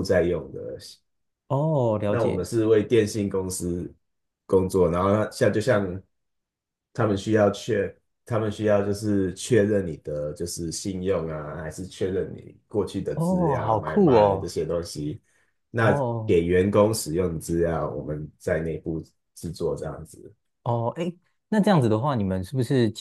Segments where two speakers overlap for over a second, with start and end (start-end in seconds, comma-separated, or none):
13.1-14.5